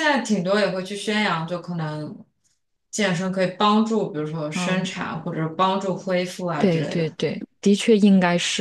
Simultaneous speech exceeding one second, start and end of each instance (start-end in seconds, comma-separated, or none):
none